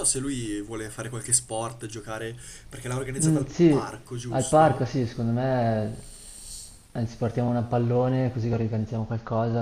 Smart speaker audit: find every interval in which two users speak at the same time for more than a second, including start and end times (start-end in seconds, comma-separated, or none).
3.2-5.0